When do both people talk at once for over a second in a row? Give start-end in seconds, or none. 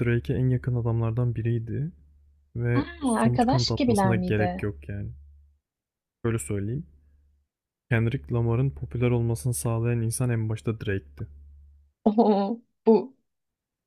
2.7-4.7